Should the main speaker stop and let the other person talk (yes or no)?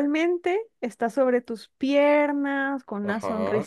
no